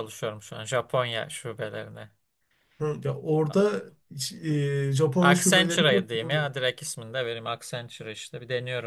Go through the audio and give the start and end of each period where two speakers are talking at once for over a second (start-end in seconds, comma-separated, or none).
5.2-6.5